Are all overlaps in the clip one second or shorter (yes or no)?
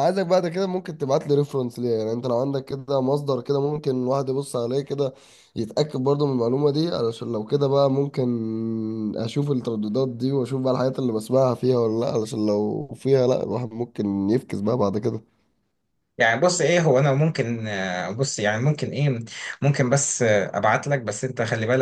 yes